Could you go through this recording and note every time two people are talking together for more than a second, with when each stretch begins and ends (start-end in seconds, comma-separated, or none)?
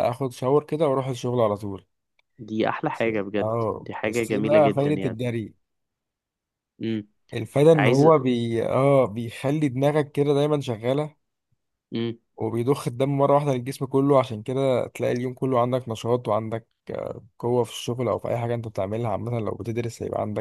2.9-5.2